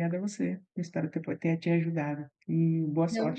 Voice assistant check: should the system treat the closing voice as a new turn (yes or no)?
no